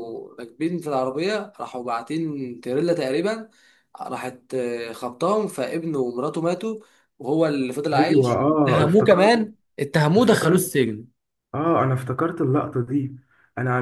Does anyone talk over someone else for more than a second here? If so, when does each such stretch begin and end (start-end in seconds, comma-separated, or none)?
8.0-9.5